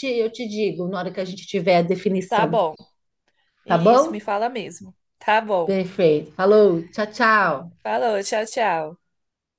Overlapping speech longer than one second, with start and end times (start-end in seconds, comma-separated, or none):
none